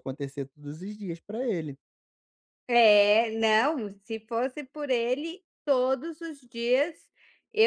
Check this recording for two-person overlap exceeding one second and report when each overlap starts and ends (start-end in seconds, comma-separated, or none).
none